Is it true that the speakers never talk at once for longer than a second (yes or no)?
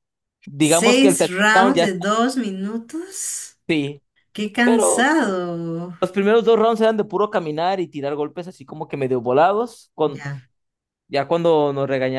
no